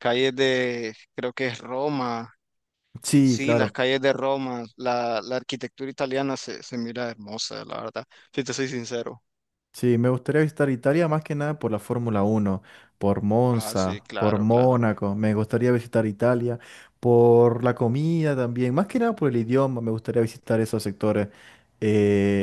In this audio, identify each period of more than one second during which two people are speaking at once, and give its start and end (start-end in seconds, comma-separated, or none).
13.5-14.8